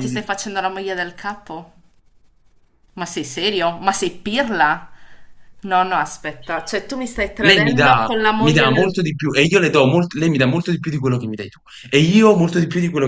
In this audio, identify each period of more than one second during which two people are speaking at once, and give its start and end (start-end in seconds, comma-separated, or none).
7.4-9.0